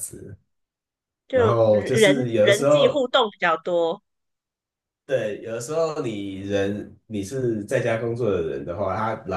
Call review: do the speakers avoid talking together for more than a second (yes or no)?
no